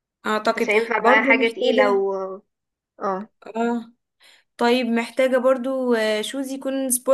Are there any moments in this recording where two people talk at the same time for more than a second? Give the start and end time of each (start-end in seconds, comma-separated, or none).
0.6-2.0